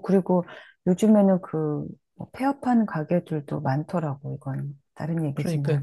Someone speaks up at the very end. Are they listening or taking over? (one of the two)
taking over